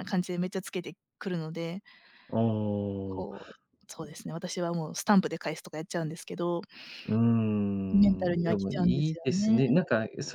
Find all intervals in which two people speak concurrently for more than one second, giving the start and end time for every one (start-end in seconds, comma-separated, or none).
7.9-9.6